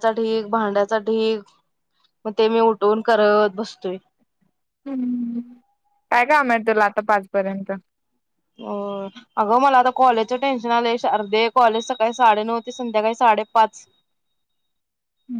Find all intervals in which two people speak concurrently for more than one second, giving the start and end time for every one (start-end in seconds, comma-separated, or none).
none